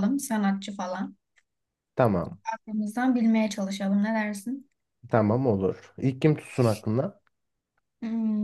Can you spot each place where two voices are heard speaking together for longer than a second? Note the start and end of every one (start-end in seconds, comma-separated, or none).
none